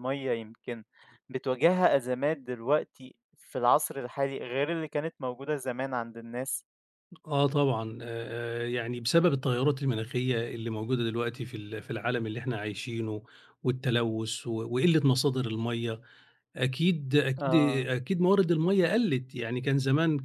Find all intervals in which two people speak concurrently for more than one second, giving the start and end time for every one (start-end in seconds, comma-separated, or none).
none